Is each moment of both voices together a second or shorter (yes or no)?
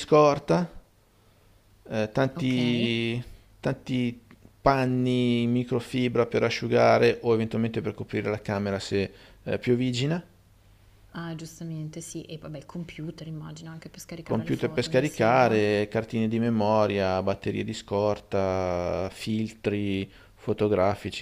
no